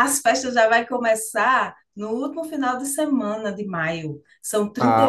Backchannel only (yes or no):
no